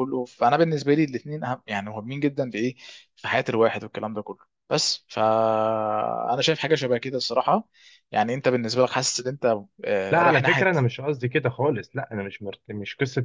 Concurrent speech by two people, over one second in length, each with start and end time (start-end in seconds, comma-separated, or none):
none